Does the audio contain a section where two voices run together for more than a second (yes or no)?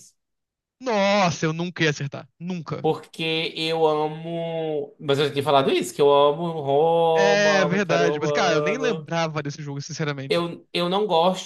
yes